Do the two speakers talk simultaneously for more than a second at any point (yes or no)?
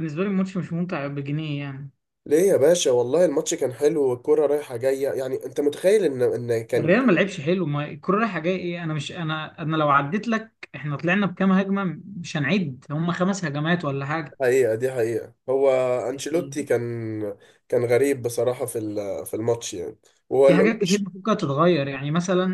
no